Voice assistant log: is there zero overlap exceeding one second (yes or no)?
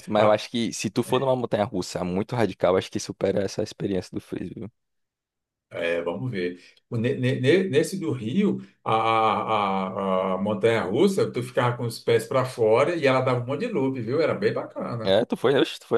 yes